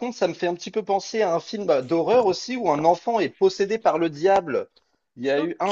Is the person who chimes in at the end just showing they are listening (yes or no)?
yes